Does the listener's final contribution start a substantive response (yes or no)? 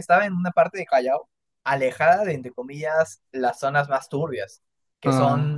no